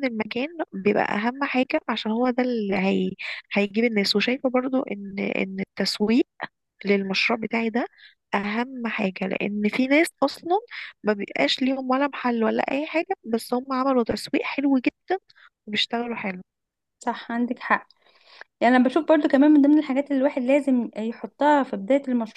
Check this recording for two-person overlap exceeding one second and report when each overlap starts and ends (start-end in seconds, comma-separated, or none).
none